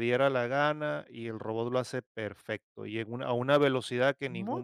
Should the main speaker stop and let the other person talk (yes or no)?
no